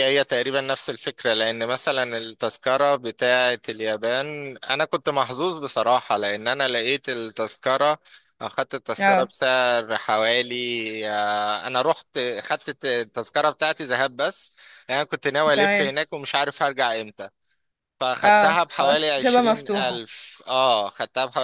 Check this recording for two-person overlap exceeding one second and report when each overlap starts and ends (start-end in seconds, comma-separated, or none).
18.2-20.0